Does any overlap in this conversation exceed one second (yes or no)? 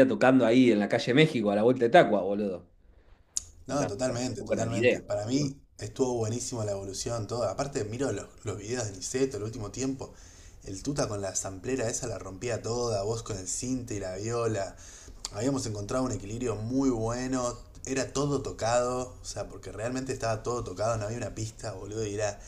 yes